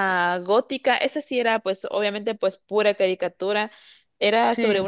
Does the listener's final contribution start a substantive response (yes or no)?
no